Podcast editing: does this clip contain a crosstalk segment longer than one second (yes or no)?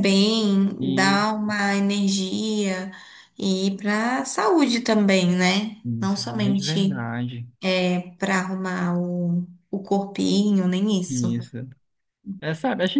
yes